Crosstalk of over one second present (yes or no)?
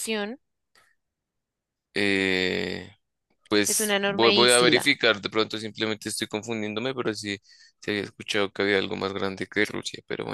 yes